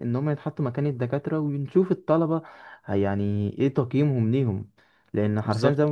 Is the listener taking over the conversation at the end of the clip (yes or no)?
no